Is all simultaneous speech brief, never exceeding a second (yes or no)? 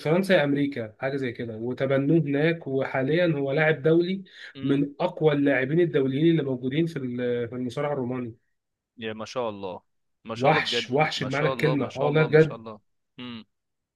no